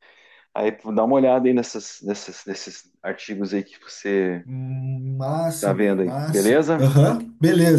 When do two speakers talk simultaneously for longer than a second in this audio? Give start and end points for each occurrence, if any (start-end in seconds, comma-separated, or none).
5.6-6.9